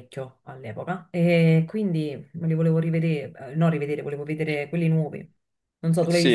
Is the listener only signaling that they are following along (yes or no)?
no